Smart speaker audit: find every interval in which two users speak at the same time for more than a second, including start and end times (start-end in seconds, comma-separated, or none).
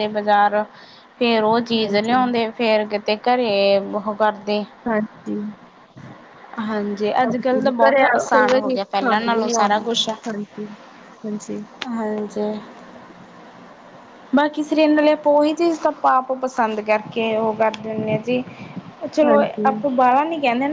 7.2-10.1